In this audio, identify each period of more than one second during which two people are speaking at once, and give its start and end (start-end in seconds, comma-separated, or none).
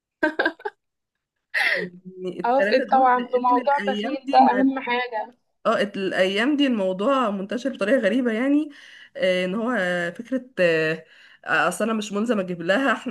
2.4-4.6